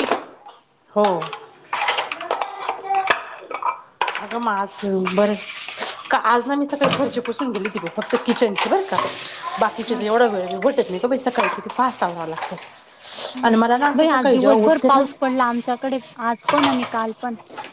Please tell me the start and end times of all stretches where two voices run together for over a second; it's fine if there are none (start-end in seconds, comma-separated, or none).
13.5-15.3